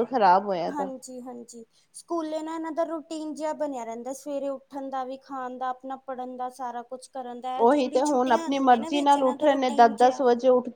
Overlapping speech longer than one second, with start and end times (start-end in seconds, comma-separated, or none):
7.6-10.2